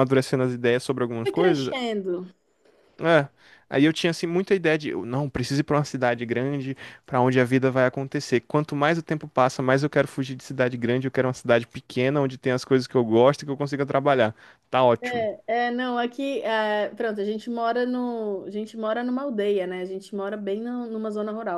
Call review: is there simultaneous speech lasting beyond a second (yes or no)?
no